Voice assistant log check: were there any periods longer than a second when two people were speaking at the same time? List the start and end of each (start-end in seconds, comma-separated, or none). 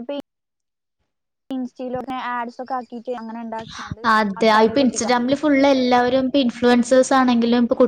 none